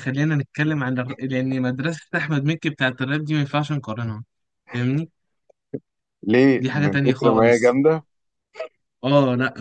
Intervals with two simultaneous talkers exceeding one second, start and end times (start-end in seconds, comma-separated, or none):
6.6-7.8